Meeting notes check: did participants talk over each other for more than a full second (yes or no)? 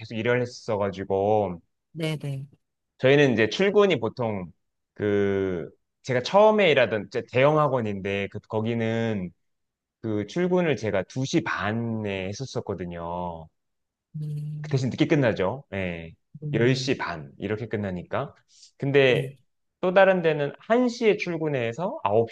no